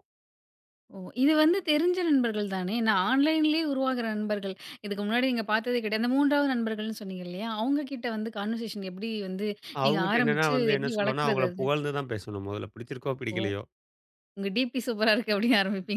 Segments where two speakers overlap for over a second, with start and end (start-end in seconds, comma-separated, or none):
9.9-11.7